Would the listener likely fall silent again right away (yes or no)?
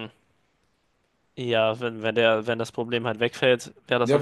no